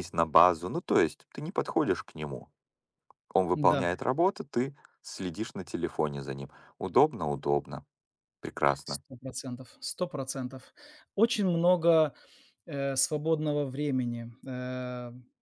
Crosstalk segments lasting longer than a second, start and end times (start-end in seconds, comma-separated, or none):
none